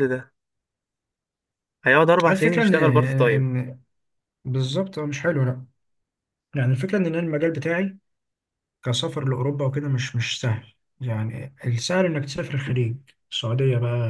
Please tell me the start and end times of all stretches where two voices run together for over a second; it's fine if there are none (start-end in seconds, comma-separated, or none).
2.3-3.5